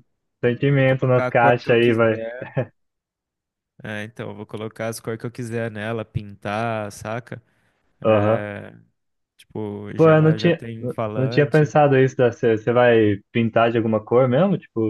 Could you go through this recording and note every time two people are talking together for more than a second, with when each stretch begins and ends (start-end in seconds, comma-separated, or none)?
0.8-2.2, 9.9-11.7